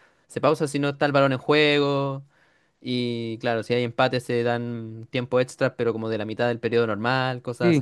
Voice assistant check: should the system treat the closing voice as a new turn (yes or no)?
yes